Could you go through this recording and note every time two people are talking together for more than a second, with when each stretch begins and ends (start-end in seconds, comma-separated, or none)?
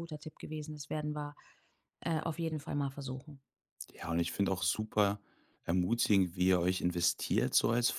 none